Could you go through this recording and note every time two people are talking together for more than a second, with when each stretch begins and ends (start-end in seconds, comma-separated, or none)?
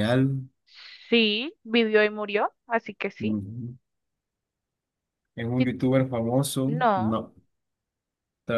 none